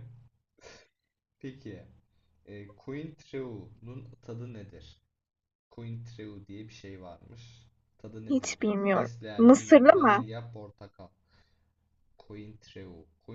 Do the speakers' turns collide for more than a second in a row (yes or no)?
yes